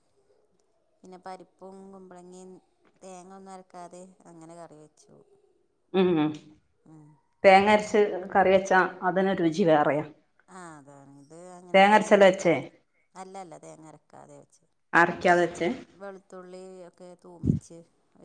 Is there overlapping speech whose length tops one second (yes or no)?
no